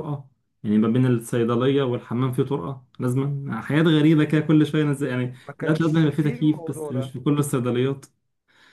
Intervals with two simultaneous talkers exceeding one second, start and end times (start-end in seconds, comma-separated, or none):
5.5-7.1